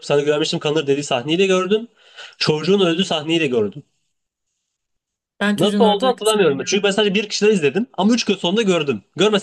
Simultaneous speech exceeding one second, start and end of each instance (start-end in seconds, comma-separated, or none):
5.5-7.0